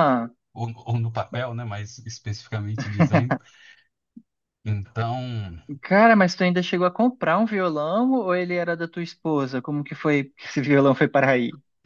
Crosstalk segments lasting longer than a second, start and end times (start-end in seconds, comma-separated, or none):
none